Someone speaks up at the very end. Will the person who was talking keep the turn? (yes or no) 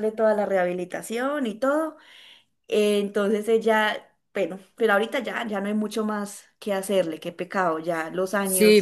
no